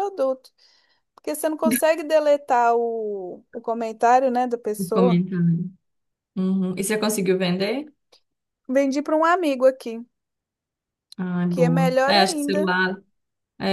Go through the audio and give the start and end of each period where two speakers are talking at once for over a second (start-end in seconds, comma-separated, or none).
11.5-12.7